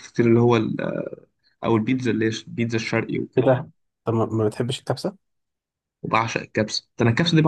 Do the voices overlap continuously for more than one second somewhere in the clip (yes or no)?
no